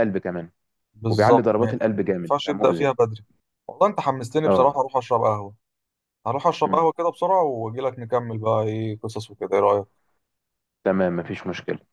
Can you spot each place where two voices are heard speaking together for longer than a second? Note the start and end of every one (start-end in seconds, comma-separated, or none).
1.1-2.9